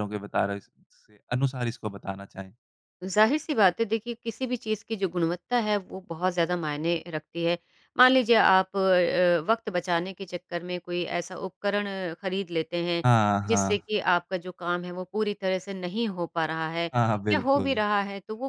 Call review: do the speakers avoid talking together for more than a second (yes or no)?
yes